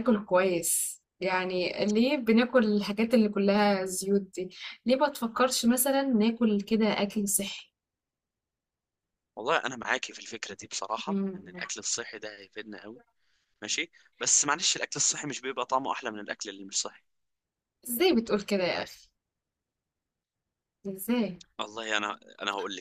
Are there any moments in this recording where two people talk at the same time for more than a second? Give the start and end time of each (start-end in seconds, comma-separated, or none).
none